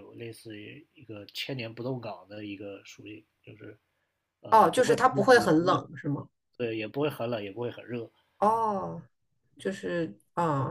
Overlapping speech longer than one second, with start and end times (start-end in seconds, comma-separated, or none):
4.5-5.8